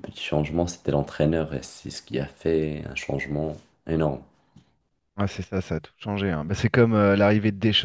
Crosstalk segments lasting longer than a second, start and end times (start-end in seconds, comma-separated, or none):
none